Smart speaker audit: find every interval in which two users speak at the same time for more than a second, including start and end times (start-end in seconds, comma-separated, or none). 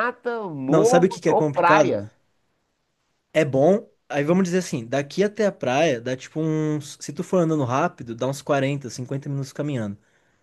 0.7-2.0